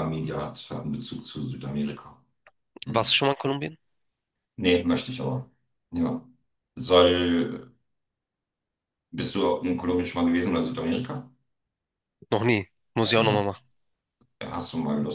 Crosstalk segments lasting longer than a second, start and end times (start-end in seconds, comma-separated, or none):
none